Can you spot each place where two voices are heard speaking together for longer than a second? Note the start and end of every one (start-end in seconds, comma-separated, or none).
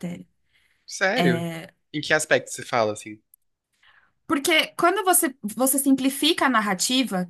none